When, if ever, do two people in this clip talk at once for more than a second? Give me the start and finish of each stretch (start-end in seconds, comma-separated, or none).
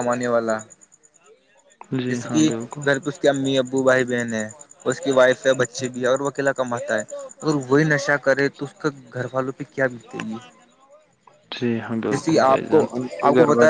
none